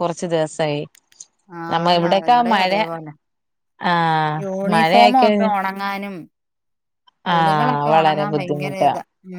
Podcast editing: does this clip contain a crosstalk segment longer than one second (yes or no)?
yes